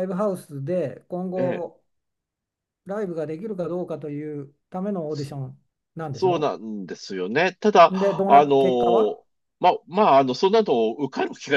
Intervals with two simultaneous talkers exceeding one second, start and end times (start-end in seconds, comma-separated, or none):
7.9-9.2